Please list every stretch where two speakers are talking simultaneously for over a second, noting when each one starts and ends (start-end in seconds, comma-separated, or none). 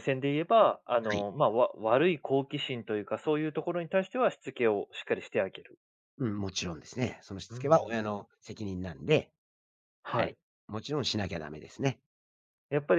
none